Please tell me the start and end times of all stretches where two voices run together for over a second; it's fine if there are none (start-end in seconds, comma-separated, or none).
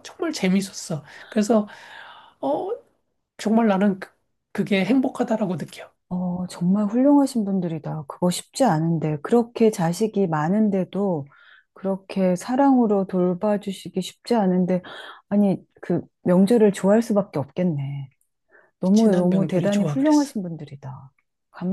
18.9-20.3